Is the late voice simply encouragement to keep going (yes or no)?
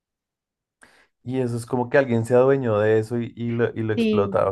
no